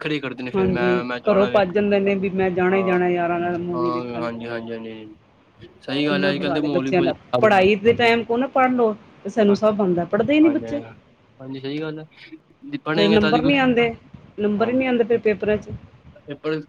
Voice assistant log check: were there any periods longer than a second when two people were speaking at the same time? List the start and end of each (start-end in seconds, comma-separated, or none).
0.6-2.0, 6.1-7.7